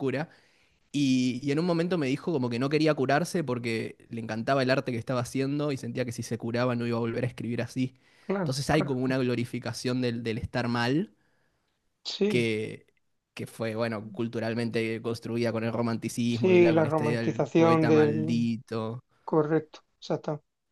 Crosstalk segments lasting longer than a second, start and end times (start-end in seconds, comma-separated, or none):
16.3-18.5